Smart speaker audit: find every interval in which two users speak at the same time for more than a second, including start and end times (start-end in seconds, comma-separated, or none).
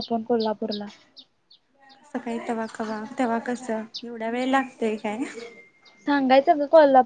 none